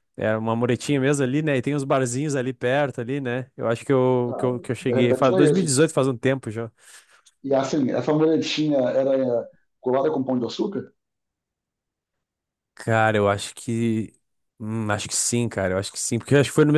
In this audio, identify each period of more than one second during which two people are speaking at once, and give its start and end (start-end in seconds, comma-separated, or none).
4.3-5.9